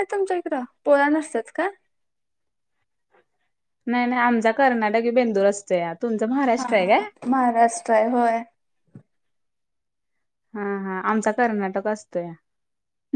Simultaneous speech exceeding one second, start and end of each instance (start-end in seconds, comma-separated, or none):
none